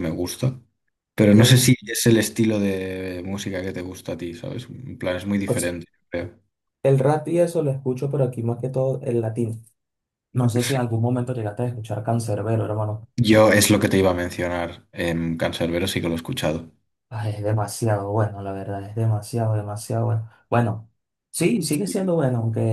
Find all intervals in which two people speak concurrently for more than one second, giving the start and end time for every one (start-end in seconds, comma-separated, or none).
none